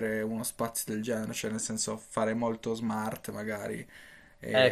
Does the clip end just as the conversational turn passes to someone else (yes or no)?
yes